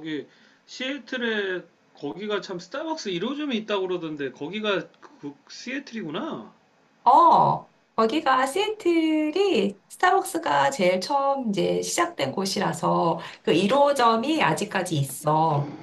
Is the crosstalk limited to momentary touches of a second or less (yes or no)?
yes